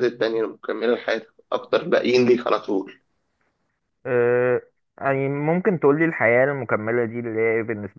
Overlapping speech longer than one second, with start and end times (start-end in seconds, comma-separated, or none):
none